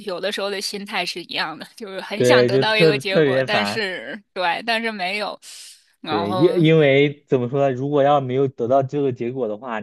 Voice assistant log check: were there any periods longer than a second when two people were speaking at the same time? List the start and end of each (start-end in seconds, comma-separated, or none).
2.1-3.9